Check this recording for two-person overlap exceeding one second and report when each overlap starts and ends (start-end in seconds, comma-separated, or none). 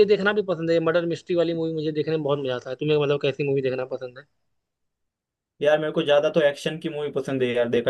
none